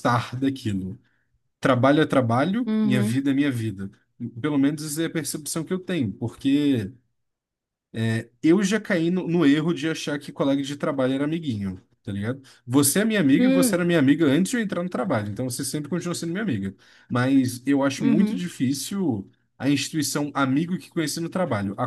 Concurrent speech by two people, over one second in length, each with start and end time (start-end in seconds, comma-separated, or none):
none